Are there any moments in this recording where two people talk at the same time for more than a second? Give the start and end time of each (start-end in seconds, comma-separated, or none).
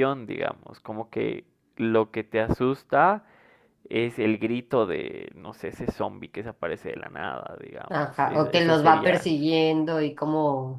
7.9-9.3